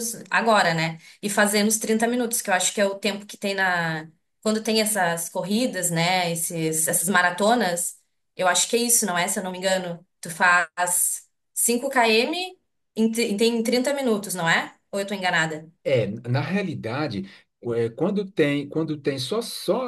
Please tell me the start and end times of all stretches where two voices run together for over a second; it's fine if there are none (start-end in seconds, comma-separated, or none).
none